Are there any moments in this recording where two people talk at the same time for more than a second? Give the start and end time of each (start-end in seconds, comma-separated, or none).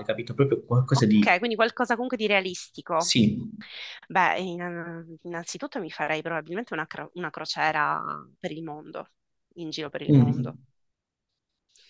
none